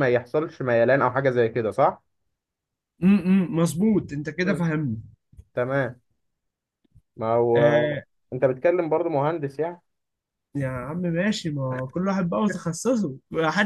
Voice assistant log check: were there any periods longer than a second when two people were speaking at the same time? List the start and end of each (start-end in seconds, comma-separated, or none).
none